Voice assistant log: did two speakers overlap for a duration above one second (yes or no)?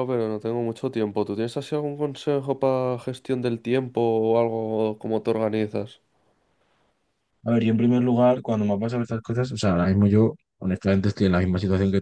no